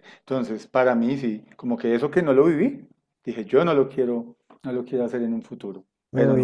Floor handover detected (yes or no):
yes